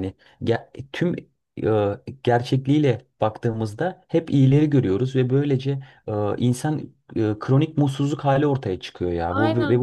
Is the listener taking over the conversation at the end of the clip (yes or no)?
no